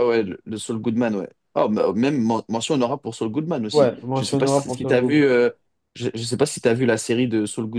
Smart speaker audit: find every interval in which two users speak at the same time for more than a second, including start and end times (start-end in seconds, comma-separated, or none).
3.7-5.3